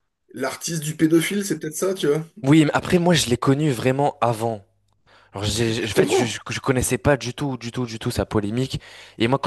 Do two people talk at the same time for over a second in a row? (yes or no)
no